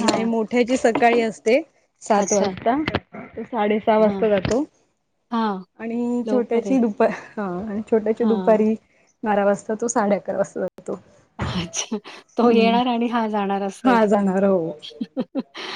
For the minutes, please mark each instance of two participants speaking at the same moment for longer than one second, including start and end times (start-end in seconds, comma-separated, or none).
none